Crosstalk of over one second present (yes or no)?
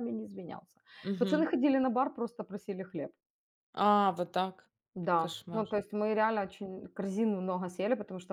no